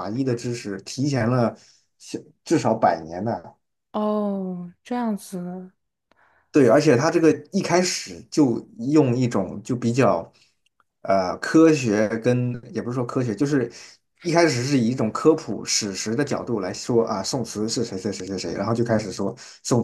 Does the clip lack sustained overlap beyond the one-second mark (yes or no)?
yes